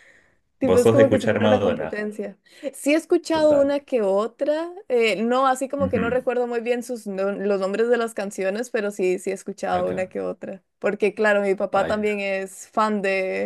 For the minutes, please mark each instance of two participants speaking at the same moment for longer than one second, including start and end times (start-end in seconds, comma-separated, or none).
0.6-2.0